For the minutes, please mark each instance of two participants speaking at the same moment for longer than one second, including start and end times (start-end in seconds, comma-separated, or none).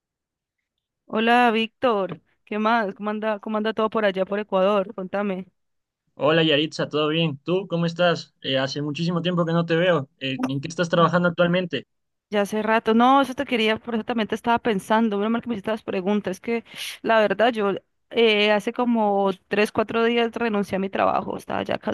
none